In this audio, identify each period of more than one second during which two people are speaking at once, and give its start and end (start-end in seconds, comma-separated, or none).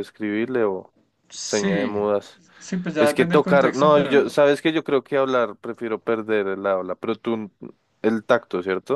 3.0-4.4